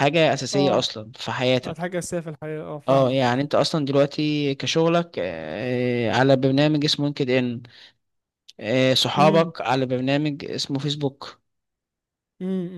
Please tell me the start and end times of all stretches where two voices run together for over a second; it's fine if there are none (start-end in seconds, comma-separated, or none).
none